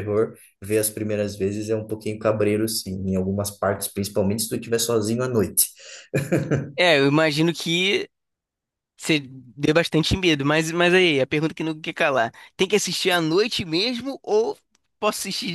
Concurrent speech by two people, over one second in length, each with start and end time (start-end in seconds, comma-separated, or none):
none